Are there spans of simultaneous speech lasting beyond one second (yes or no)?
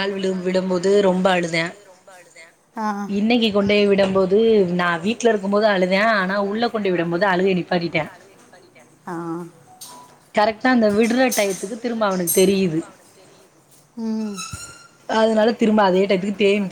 yes